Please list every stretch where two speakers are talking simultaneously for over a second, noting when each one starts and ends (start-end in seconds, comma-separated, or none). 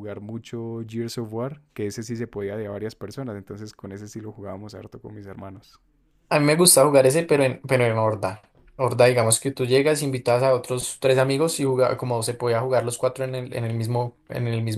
none